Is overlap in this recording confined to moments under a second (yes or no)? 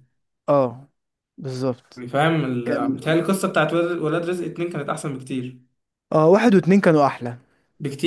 yes